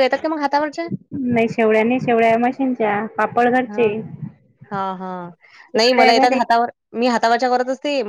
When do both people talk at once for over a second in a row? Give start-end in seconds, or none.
none